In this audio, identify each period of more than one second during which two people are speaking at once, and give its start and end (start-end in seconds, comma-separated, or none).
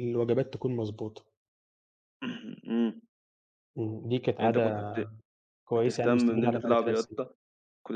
5.7-7.2